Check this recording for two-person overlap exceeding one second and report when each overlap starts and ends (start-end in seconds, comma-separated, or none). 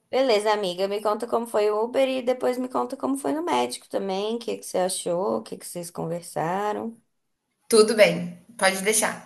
none